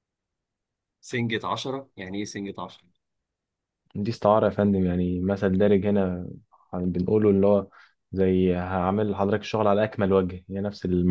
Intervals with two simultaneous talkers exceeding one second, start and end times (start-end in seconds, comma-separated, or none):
none